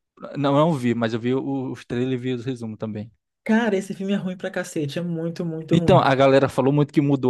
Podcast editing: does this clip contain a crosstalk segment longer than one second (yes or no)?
no